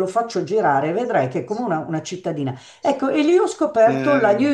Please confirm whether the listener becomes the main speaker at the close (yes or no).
no